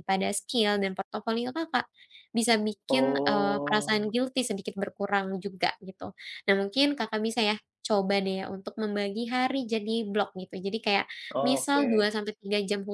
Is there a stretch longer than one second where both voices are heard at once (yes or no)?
yes